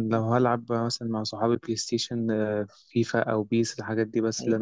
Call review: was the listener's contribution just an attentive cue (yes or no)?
yes